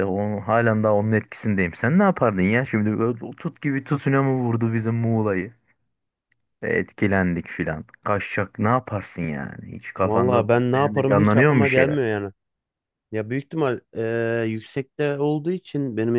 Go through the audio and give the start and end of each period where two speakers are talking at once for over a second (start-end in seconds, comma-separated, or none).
10.0-12.0